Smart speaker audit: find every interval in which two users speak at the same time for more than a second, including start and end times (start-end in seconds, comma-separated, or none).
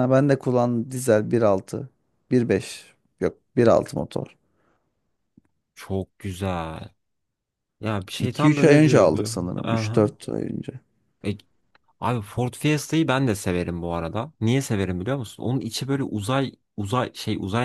8.2-10.1